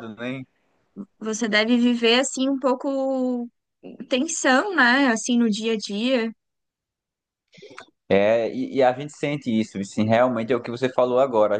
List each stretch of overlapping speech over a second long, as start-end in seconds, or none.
none